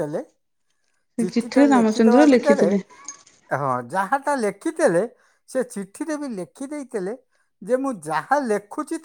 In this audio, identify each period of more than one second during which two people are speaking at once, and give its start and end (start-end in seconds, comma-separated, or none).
1.2-2.7